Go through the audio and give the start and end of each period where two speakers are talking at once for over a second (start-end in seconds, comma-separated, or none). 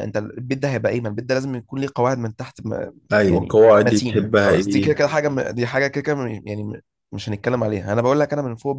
3.1-4.9